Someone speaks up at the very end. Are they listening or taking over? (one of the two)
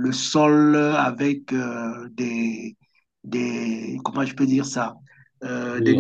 taking over